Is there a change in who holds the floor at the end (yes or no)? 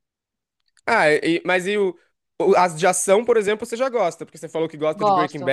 no